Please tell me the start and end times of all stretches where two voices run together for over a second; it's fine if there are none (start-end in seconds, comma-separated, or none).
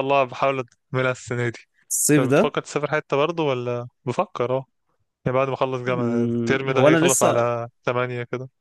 5.9-7.5